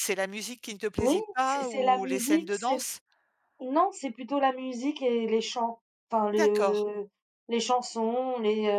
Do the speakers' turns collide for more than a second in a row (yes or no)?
yes